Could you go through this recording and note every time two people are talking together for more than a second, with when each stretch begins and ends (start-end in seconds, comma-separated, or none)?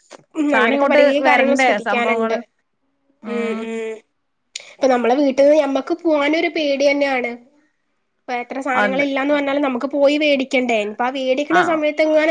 0.5-2.4